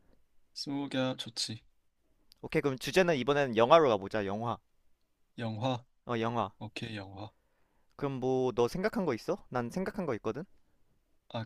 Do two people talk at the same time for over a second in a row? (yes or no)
no